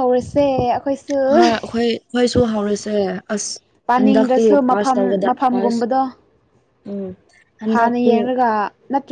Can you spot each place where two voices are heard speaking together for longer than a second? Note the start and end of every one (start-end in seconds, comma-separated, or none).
4.0-5.8